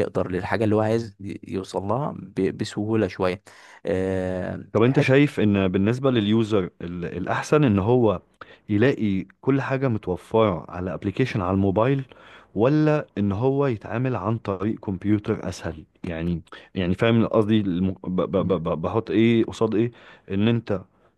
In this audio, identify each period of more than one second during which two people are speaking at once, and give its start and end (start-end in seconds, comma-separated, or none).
none